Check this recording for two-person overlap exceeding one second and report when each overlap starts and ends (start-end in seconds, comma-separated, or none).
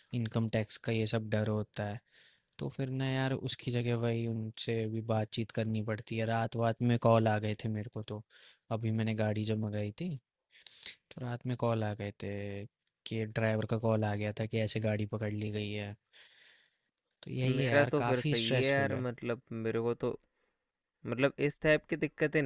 17.4-19.1